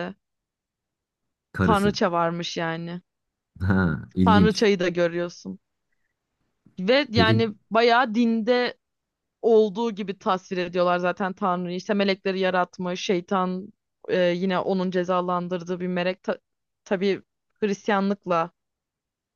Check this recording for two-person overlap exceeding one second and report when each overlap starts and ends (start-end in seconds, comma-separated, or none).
none